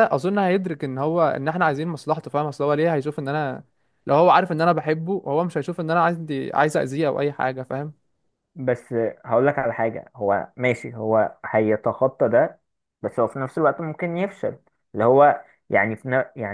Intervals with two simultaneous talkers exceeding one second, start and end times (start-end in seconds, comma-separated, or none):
none